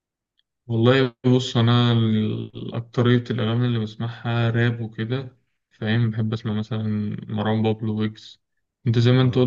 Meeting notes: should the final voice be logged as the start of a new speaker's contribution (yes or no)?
no